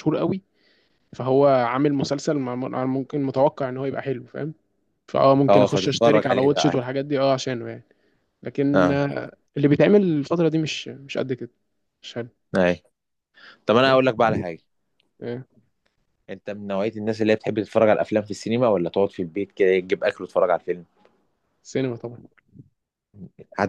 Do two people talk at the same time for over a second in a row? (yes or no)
yes